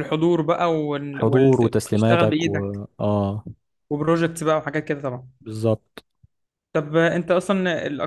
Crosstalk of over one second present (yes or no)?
yes